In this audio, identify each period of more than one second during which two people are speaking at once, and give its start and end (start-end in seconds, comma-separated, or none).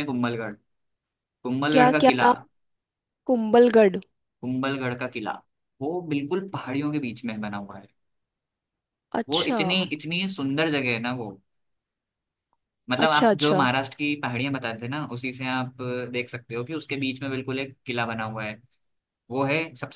none